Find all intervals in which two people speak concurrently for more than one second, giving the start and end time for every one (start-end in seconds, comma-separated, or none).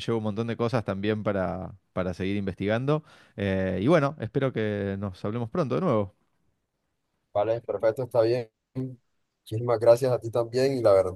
none